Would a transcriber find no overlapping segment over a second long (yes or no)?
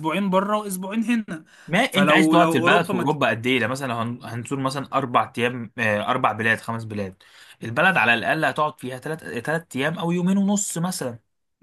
no